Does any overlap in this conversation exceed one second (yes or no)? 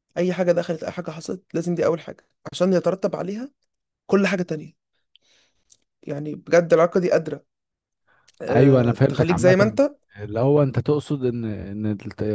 yes